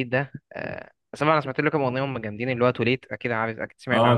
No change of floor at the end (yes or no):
no